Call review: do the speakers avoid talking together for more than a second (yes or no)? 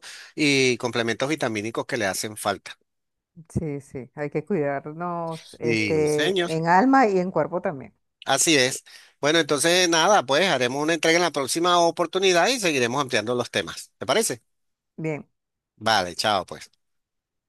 no